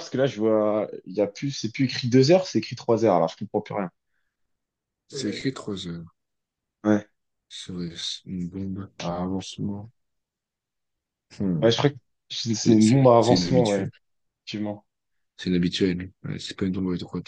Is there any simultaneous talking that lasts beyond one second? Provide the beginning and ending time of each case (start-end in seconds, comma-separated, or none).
12.5-13.9